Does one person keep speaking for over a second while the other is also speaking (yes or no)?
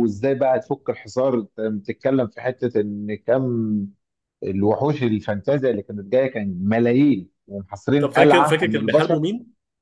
yes